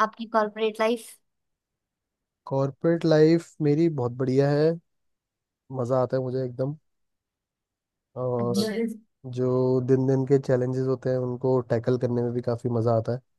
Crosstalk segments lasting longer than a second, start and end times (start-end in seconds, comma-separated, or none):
none